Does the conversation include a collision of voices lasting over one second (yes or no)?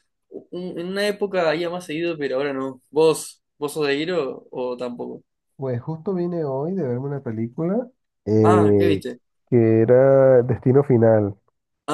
no